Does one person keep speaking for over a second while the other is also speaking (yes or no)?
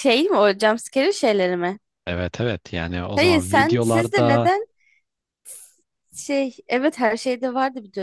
yes